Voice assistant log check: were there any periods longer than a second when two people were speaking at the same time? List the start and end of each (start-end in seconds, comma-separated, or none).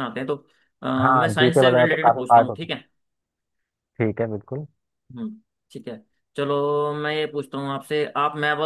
1.0-2.7